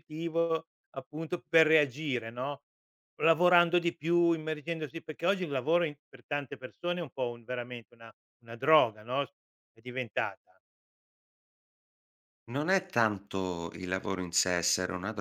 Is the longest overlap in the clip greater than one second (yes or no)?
no